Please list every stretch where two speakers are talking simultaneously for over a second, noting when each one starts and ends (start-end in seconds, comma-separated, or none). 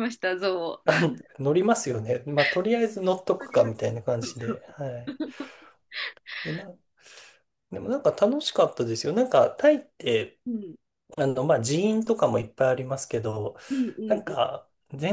3.4-5.1